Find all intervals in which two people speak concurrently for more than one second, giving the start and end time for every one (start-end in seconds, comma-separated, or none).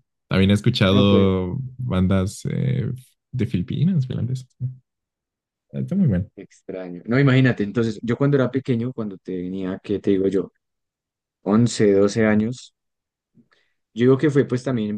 none